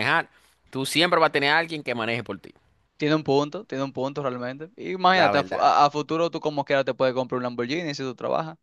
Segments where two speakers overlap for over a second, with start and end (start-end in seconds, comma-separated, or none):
none